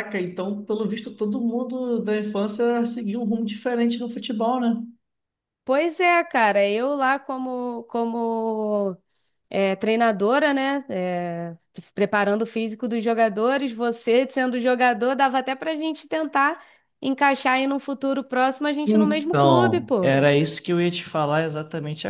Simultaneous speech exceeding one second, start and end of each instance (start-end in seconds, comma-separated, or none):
18.9-20.1